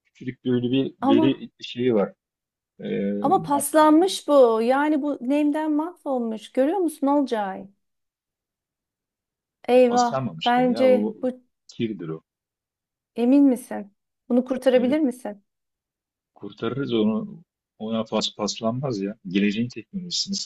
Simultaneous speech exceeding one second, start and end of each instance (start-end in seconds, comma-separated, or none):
9.9-11.2